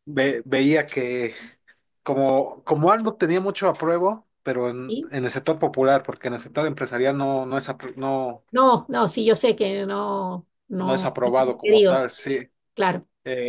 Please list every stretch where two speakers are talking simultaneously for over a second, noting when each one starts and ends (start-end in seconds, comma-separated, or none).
10.8-12.1